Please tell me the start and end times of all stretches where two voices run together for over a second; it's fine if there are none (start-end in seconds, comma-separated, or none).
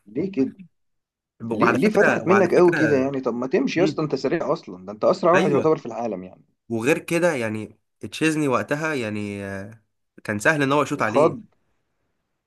1.5-3.1